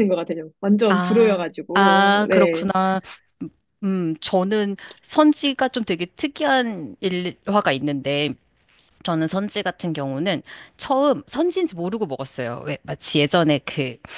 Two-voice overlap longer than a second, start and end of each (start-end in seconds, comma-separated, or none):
0.9-2.7